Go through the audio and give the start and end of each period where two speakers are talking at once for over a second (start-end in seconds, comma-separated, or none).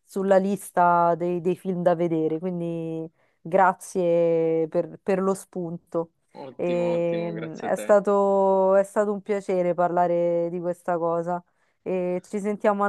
6.6-8.0